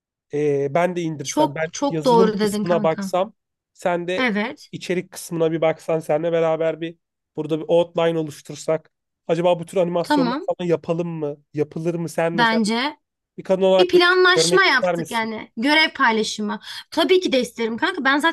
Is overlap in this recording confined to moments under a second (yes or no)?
no